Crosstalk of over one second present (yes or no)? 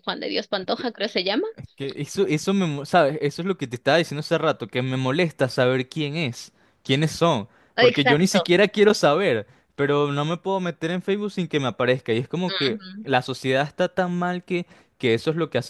no